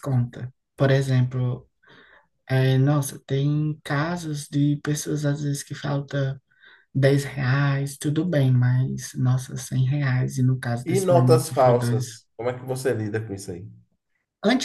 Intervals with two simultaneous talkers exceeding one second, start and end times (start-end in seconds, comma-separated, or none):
10.8-12.2